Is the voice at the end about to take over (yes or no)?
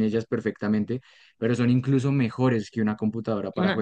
no